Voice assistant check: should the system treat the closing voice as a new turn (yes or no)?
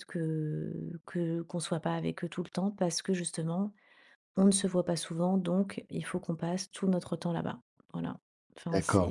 yes